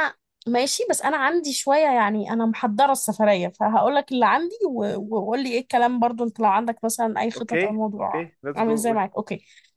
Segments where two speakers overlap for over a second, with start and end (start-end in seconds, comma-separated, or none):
7.4-9.0